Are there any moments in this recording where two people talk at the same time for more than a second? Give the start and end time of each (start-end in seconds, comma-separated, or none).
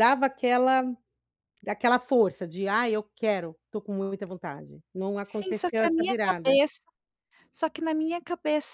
5.2-6.6